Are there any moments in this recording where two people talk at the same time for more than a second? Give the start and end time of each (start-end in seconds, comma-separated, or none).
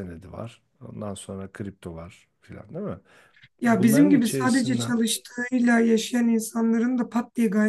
3.6-5.0